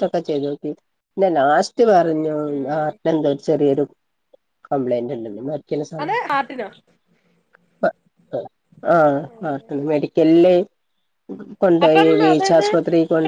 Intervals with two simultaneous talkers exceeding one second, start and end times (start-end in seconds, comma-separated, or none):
none